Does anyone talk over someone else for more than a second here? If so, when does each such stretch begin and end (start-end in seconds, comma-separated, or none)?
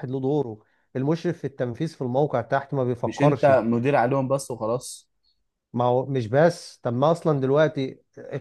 none